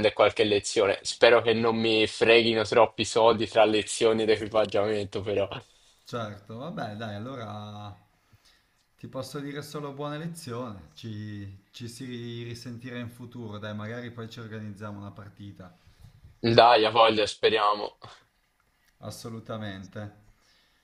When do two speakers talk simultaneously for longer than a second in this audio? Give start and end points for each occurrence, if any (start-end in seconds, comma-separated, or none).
none